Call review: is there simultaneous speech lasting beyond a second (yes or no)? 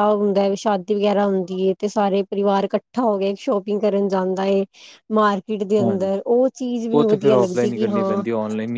yes